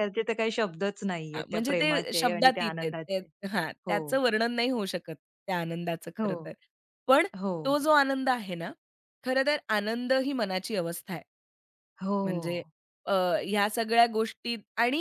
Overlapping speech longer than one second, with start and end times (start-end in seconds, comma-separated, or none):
1.4-3.2